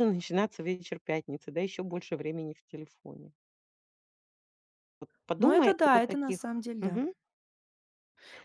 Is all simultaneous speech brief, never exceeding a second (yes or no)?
no